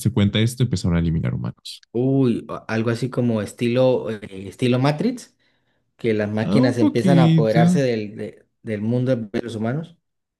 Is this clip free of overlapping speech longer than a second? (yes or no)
no